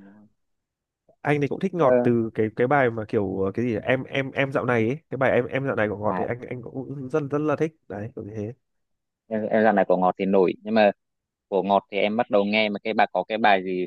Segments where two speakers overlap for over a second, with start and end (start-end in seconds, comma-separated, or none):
none